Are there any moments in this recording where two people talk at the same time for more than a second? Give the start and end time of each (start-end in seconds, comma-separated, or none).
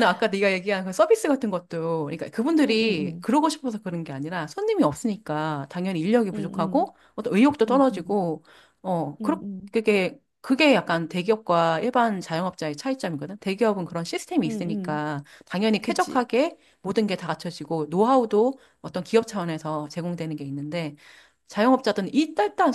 none